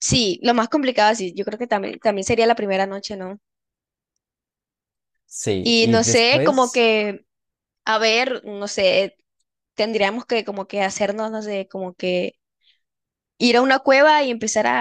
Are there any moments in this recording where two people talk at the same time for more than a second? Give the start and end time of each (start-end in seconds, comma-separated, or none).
5.6-6.8